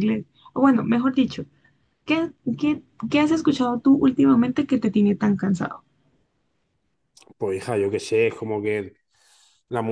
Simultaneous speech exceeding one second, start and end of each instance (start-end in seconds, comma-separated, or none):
none